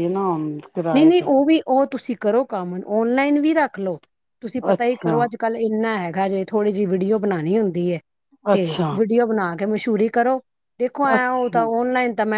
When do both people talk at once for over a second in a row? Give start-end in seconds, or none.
none